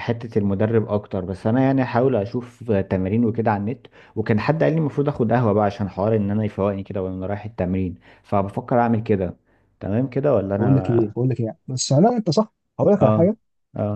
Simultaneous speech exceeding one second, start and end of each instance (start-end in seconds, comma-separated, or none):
none